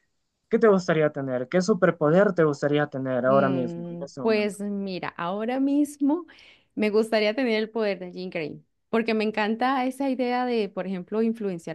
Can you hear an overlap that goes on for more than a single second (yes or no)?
yes